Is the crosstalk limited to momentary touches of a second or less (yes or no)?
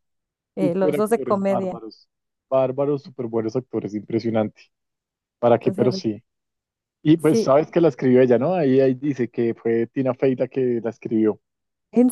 no